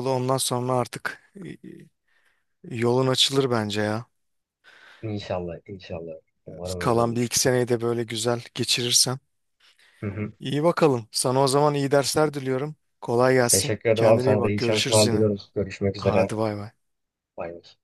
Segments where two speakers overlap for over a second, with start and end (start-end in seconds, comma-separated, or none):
13.5-15.3